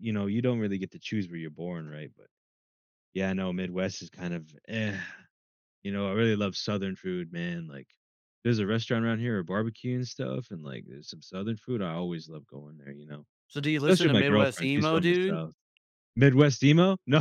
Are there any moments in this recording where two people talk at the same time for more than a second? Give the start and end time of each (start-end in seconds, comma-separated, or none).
13.9-15.4